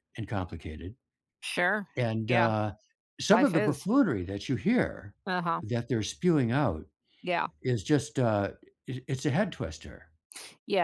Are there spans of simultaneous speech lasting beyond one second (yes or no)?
no